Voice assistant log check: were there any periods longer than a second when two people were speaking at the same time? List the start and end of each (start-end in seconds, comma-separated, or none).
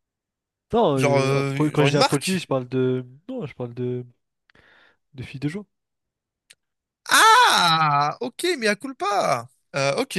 0.9-2.5